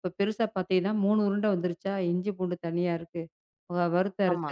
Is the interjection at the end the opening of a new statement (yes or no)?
no